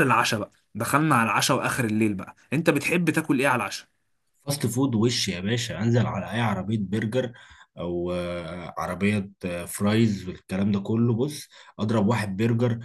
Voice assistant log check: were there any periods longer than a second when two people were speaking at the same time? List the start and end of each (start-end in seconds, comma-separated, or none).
none